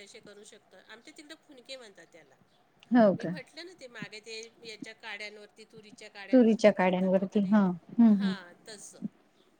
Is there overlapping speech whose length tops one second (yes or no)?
yes